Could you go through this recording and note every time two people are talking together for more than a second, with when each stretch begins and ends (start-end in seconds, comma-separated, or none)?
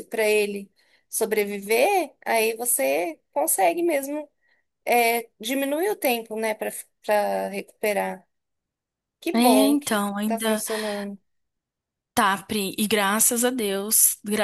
9.3-10.6